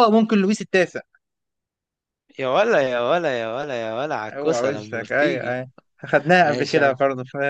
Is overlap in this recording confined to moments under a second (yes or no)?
no